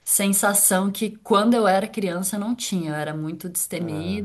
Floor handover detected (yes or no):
no